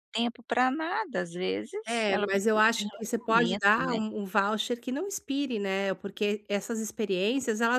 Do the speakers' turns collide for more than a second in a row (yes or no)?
yes